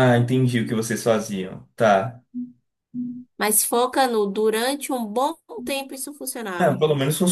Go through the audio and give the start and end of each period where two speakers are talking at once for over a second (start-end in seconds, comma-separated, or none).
none